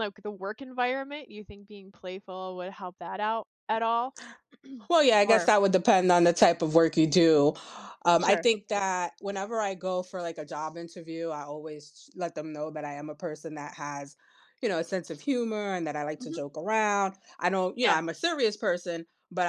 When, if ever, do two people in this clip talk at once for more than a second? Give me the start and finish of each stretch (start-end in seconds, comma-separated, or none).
none